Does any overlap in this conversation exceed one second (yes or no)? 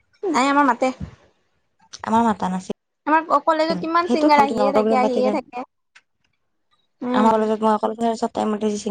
yes